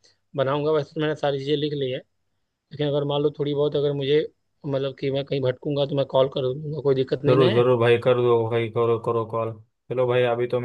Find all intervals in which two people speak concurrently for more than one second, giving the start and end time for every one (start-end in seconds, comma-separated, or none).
none